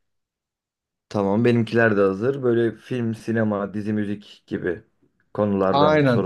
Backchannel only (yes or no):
no